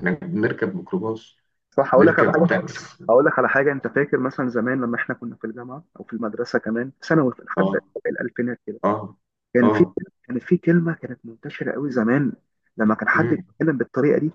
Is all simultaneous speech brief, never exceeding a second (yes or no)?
yes